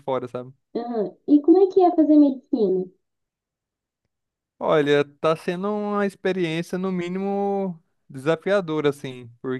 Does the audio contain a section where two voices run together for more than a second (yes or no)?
no